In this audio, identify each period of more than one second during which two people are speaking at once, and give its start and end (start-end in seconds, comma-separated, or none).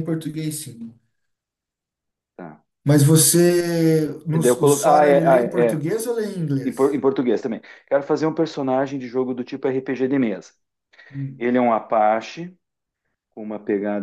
4.3-5.8